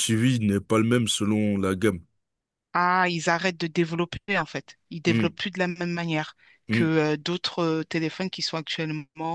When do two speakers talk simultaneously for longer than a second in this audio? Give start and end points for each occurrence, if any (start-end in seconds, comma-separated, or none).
none